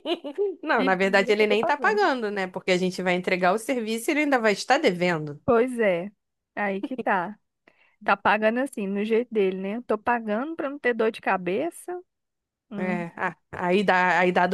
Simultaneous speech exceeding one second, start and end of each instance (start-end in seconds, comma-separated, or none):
0.8-2.0